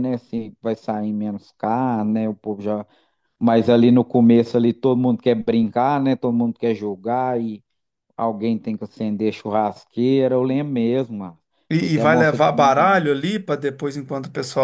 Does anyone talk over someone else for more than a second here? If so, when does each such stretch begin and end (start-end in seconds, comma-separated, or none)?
11.8-13.1